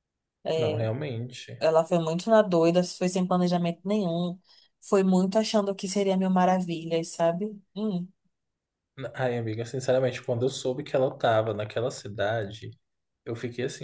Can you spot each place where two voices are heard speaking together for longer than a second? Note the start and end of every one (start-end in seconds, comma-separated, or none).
none